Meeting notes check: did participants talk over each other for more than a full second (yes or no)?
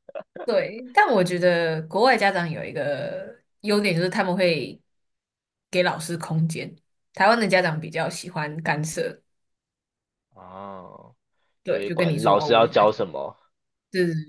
yes